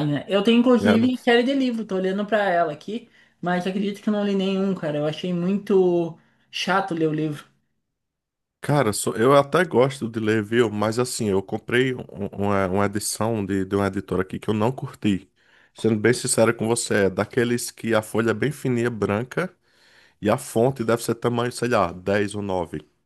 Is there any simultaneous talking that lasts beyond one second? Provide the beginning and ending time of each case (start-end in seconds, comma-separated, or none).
none